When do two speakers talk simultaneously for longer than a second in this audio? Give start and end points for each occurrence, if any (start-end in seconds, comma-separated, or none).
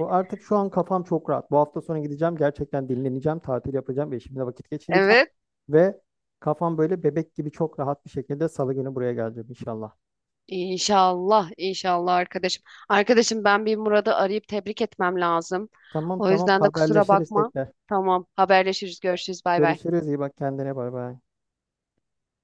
16.2-17.5